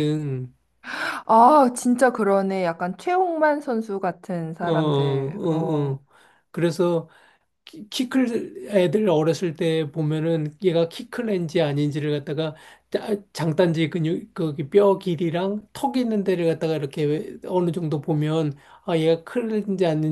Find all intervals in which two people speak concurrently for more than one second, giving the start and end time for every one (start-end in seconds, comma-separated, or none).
4.7-6.0